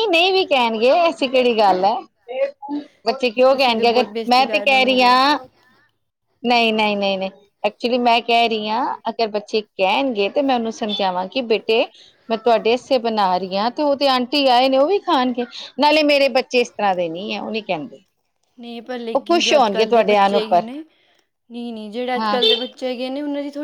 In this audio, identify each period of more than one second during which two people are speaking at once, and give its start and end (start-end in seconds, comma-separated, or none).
3.5-5.1